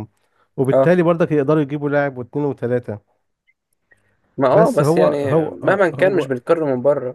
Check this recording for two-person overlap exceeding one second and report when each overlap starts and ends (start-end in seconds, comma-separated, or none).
4.5-6.3